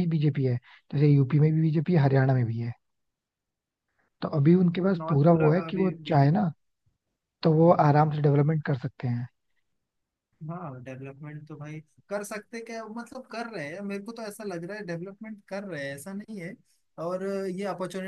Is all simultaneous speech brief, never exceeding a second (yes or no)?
no